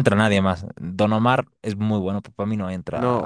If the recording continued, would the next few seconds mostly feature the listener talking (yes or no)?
yes